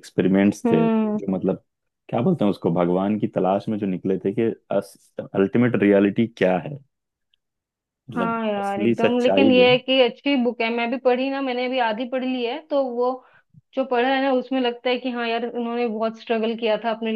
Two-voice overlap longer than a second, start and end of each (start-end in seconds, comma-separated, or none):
8.2-9.8